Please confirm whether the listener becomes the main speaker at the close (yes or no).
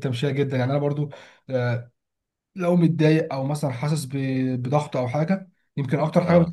no